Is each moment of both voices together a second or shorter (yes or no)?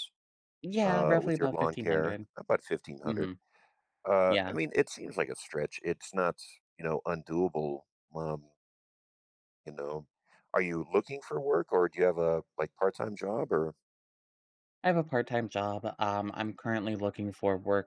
no